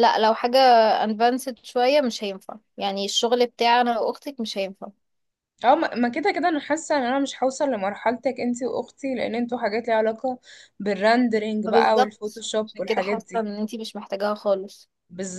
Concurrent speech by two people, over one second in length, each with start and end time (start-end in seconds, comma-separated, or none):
11.7-13.5